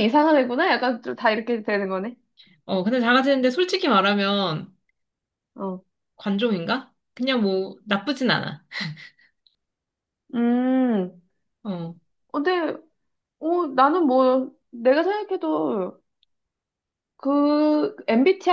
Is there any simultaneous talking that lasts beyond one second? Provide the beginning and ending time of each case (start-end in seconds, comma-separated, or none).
none